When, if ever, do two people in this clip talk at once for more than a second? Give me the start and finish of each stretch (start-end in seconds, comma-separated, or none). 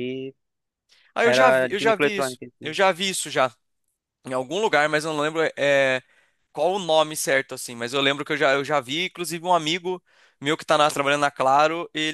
1.2-2.8